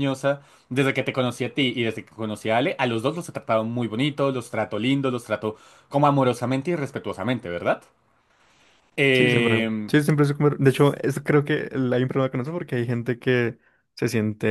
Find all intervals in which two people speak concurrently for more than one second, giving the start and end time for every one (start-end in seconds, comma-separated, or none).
none